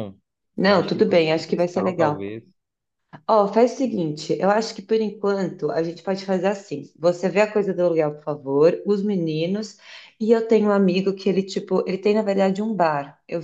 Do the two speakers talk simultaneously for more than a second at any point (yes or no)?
yes